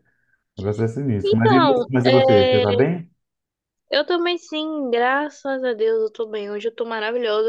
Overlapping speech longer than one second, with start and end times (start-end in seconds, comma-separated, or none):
1.2-2.6